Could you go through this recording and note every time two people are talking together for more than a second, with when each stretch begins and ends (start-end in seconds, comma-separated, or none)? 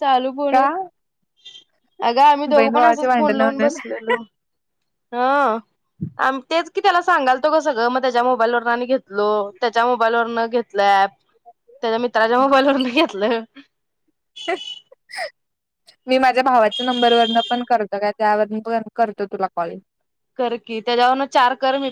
2.5-3.7